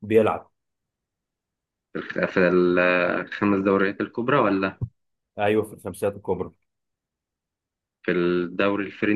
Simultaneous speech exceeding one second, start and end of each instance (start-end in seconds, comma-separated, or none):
none